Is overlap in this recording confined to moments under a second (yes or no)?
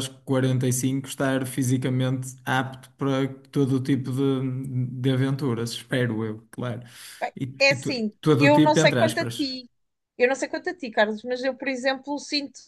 no